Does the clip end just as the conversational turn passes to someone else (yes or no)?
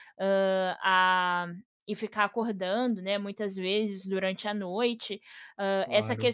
no